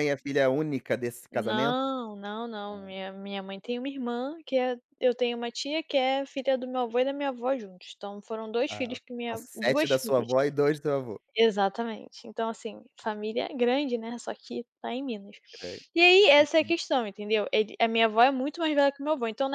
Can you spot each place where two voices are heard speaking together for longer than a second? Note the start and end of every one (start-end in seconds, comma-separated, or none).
8.7-10.3